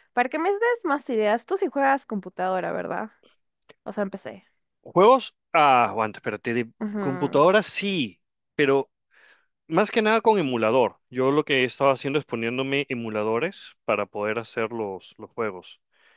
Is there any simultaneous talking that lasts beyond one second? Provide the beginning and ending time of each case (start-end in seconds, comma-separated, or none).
none